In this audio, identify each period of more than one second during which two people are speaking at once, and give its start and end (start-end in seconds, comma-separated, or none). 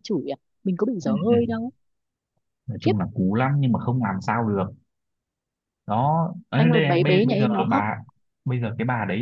6.5-7.9